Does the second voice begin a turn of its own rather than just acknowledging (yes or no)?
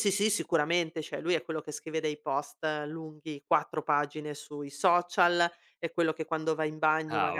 no